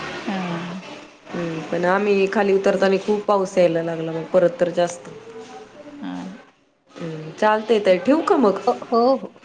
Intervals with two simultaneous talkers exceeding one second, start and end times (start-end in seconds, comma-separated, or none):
none